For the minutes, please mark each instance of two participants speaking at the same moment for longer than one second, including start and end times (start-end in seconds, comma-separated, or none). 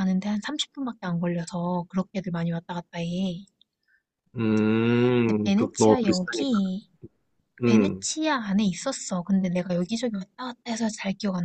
5.2-6.6